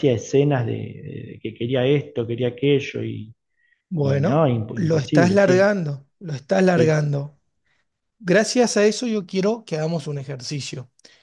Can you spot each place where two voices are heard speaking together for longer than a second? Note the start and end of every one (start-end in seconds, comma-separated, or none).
4.0-5.7